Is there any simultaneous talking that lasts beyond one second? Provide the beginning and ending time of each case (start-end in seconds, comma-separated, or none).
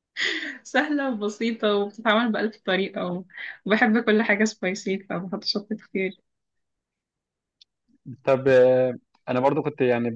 none